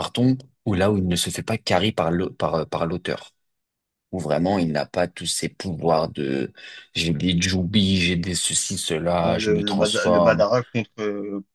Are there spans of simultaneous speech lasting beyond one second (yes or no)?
yes